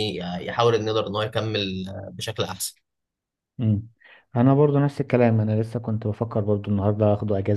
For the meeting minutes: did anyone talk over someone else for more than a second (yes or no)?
no